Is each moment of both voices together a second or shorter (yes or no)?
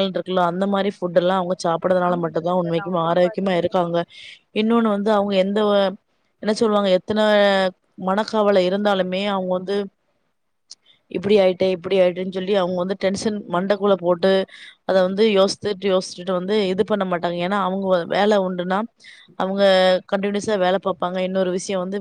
no